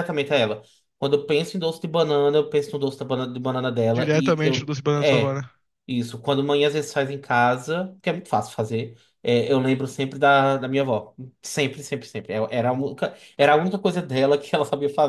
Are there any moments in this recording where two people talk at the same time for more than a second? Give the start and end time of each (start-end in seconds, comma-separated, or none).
4.0-5.4